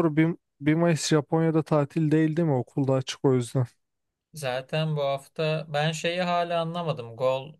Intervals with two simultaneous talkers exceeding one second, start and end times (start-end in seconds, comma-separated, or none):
none